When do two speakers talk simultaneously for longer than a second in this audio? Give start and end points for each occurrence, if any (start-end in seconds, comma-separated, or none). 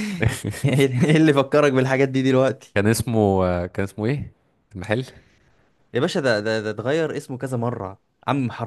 none